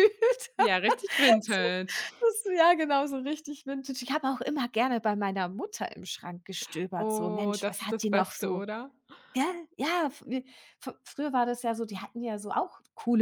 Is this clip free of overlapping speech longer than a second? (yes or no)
no